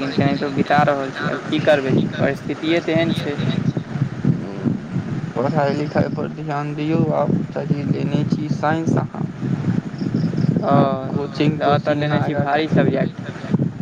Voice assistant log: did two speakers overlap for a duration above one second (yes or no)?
yes